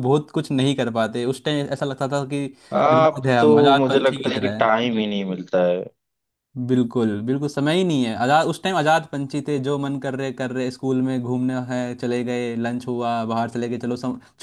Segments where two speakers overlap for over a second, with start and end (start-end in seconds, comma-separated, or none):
2.9-4.7